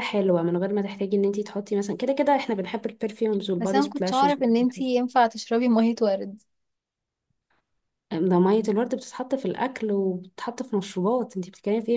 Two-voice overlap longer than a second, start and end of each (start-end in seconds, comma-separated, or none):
3.6-4.8